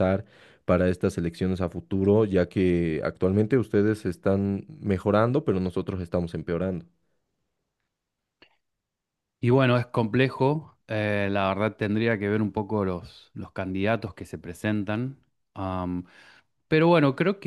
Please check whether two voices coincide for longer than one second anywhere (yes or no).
no